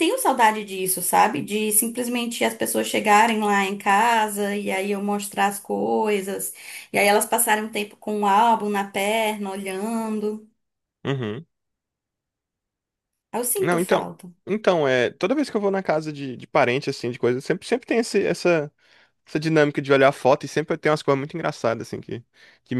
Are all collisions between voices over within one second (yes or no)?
yes